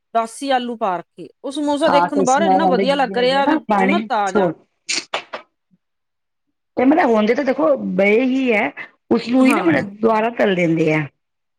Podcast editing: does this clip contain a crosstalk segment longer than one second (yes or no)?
yes